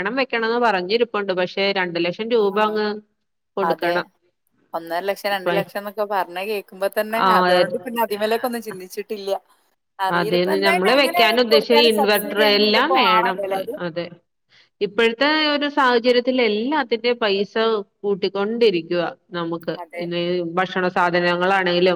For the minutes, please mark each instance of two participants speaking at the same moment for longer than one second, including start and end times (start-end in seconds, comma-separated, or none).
11.5-13.4